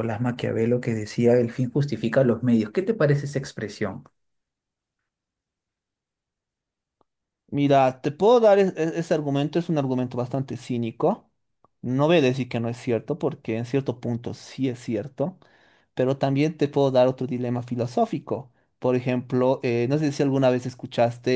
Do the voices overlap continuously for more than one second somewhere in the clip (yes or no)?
no